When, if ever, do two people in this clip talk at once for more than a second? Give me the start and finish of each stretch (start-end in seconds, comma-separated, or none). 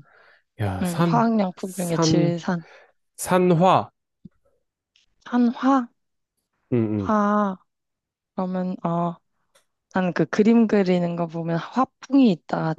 0.8-2.3